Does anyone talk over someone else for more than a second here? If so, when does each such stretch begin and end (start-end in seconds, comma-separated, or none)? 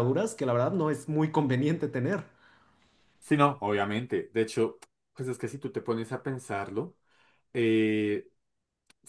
none